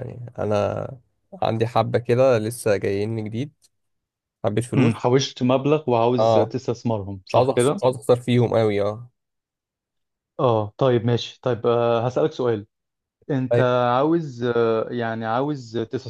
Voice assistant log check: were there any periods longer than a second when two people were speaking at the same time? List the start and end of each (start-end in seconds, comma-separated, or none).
none